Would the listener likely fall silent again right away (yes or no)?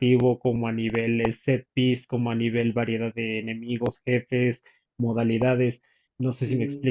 no